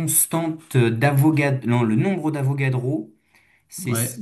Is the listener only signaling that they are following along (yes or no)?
yes